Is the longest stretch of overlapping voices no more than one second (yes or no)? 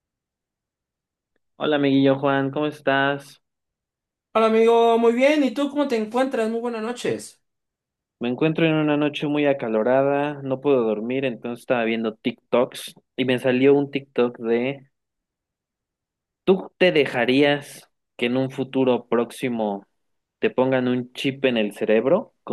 yes